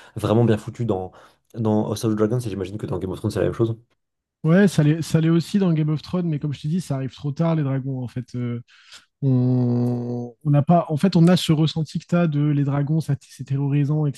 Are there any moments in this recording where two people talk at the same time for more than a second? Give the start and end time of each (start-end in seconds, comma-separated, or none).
none